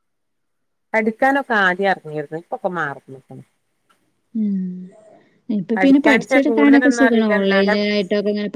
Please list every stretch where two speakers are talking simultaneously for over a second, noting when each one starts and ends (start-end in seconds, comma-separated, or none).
5.8-7.7